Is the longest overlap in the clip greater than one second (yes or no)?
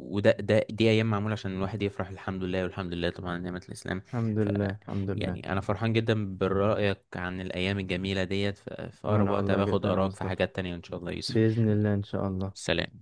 yes